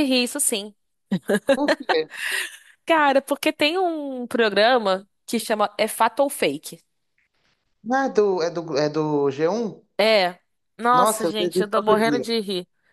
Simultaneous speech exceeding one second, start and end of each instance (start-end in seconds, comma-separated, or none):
10.9-12.3